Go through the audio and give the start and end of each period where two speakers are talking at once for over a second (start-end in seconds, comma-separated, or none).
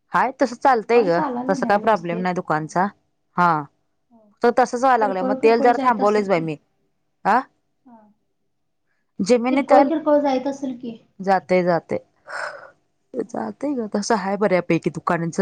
0.6-2.2